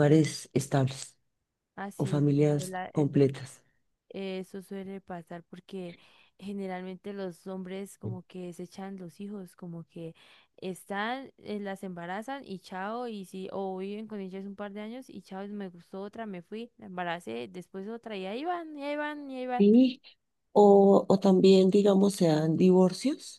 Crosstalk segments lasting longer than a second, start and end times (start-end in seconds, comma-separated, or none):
2.0-3.2